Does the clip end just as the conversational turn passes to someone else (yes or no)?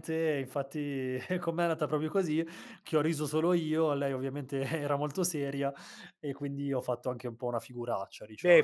yes